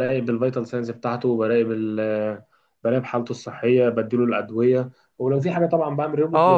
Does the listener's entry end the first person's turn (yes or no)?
yes